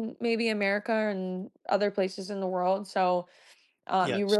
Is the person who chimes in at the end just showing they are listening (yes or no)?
yes